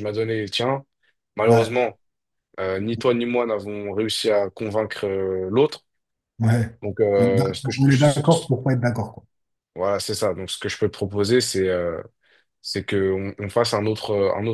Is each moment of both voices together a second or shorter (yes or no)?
no